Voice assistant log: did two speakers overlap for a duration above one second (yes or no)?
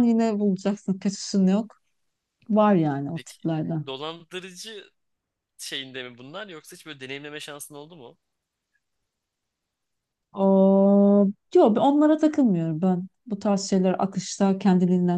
no